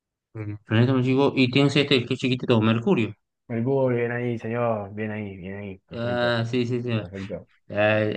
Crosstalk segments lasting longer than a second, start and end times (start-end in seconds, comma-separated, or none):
none